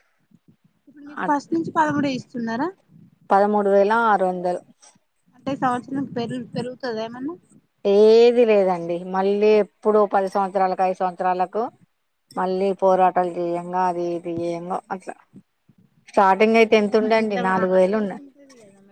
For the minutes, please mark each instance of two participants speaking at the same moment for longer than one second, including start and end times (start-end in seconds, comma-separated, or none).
16.5-18.2